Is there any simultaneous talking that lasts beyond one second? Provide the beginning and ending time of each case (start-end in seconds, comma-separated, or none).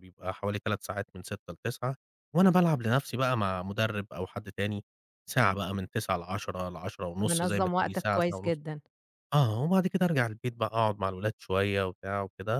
7.2-8.6